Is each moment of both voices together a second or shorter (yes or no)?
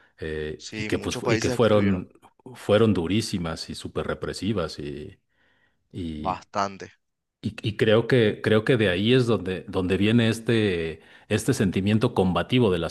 no